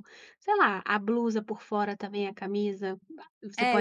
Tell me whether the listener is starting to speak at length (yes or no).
yes